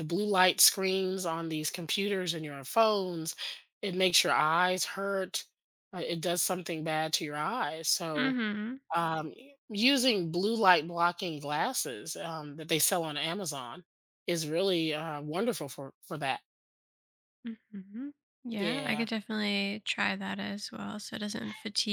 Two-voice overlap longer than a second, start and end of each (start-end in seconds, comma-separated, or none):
none